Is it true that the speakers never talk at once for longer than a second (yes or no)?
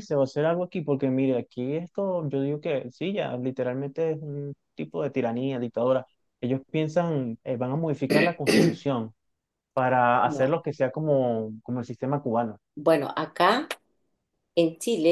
yes